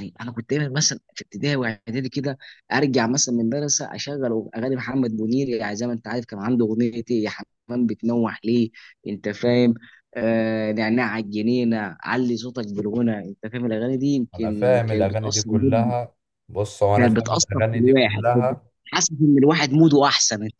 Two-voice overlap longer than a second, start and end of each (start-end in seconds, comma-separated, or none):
14.3-15.9, 16.9-18.6